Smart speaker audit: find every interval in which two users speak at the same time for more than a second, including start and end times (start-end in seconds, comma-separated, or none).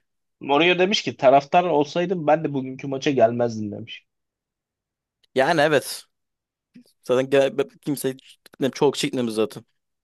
none